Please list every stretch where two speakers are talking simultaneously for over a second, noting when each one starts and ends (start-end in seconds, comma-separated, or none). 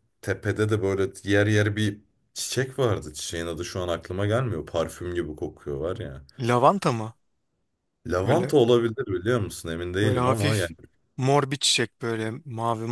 none